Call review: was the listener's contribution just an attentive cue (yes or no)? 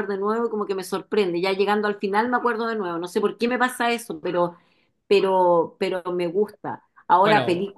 yes